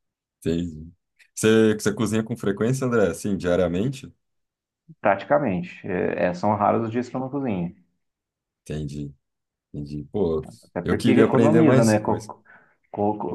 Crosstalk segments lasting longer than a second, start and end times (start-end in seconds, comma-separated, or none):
10.8-12.3